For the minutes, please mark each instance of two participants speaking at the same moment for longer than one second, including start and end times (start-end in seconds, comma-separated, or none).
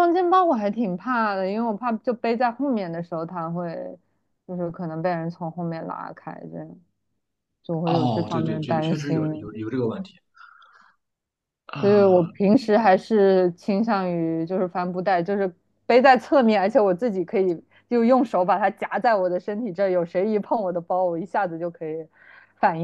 7.8-9.5